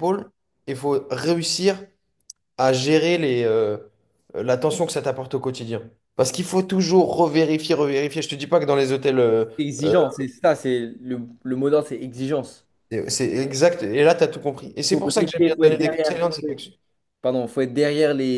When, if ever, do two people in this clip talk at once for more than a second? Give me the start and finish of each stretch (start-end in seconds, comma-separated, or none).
14.9-16.2